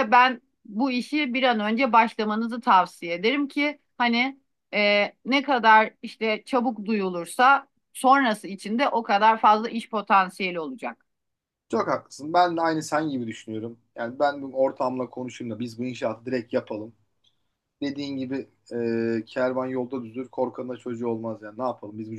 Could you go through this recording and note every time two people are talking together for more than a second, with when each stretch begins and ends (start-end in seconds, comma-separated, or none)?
none